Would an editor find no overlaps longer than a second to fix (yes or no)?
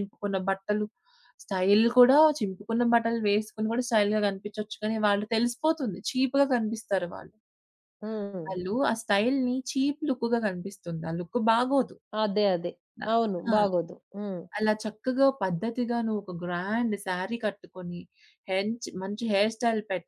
yes